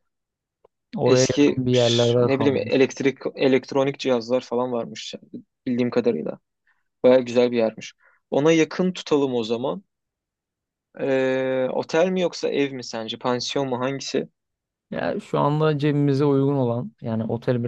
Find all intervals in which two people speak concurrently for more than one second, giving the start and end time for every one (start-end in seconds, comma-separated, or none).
1.0-2.8